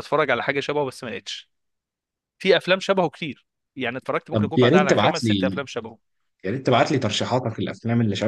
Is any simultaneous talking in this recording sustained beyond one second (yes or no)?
yes